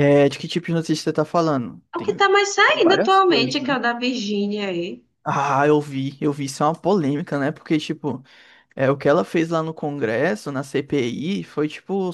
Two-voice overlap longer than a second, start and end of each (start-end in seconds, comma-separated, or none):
1.9-3.7